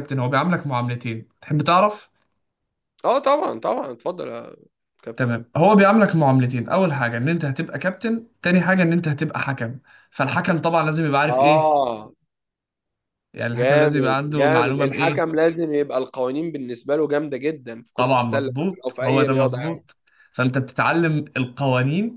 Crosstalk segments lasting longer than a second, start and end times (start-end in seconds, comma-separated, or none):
13.5-15.3, 18.0-19.9